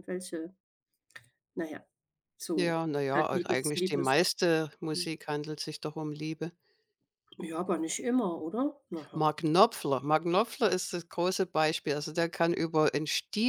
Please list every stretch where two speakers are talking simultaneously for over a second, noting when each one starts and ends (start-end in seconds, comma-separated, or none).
2.6-4.1